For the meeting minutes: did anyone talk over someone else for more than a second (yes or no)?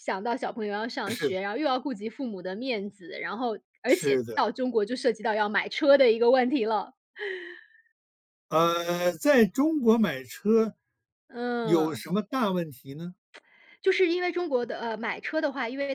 no